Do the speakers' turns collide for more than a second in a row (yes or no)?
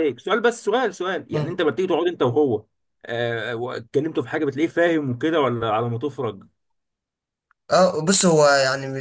no